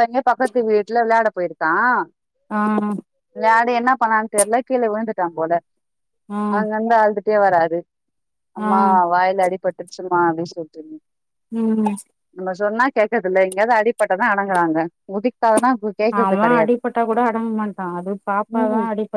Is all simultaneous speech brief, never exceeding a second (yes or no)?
yes